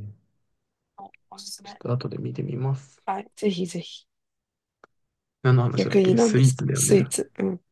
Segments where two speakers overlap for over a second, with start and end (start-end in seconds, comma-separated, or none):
5.8-7.1